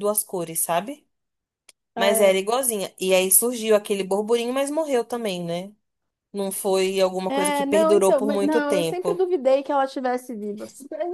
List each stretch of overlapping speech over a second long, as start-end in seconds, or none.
7.3-9.2